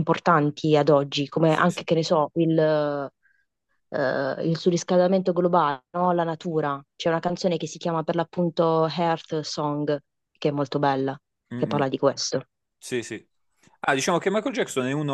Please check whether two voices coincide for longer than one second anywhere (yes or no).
no